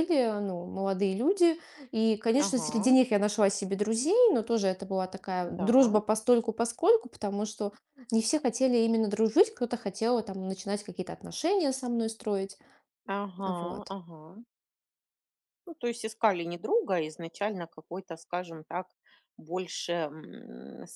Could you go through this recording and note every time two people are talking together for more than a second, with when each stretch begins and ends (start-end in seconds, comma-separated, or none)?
none